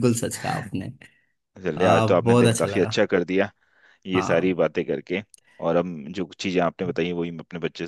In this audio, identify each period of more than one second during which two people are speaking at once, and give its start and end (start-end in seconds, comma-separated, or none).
1.8-3.0